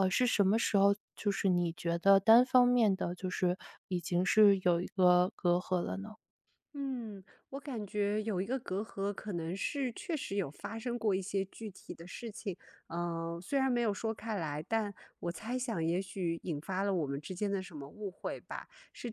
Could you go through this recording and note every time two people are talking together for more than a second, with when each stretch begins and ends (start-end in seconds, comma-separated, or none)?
none